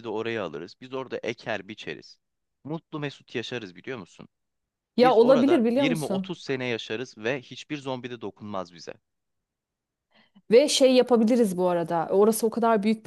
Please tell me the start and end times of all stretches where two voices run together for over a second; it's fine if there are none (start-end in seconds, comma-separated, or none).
5.0-6.4